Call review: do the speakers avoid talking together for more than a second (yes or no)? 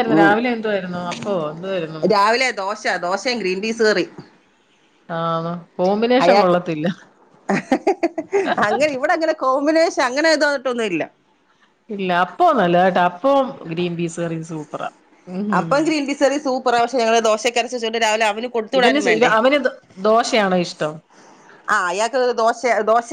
yes